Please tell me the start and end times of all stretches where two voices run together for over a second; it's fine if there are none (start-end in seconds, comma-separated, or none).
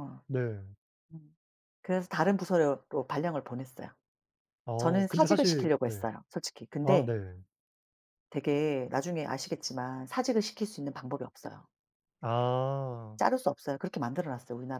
4.8-6.0